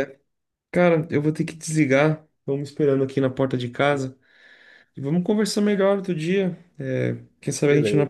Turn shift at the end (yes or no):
no